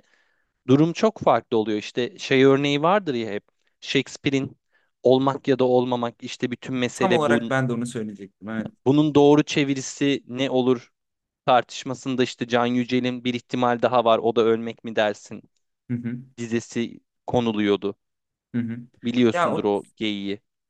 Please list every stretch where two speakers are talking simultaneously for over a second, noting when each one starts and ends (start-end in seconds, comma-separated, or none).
none